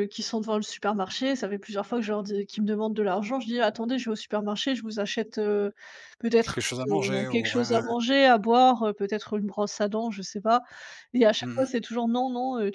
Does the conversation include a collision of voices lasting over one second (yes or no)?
yes